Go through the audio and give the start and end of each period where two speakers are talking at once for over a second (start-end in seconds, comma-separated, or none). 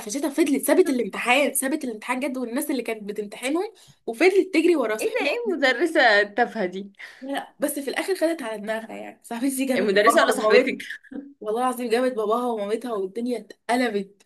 none